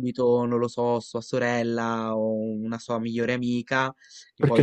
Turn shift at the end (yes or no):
no